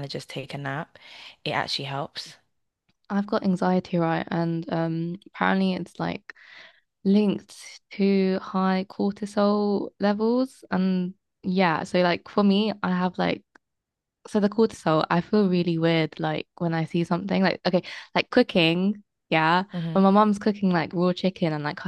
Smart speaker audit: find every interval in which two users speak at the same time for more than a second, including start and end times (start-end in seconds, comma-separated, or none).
none